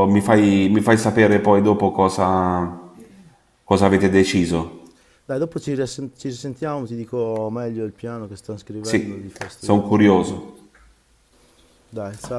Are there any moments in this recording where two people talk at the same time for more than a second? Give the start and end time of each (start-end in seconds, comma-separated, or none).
8.8-10.4